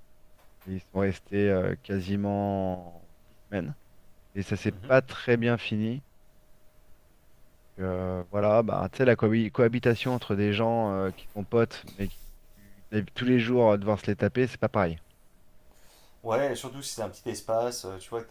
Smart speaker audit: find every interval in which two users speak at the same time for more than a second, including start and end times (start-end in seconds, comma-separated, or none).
none